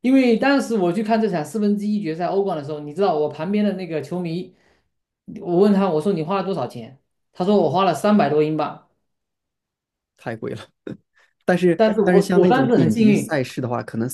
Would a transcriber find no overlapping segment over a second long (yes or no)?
no